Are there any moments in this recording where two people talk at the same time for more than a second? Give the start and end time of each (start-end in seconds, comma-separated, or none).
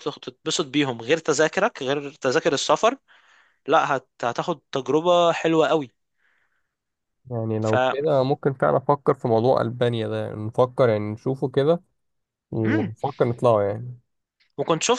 none